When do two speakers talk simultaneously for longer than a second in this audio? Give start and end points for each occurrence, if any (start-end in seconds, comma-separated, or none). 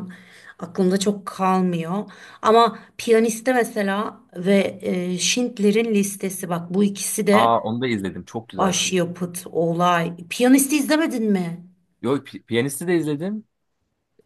none